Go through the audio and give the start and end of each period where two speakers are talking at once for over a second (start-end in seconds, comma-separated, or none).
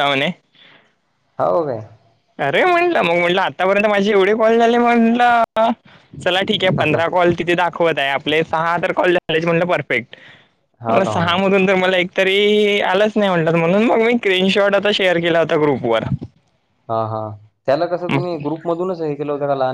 none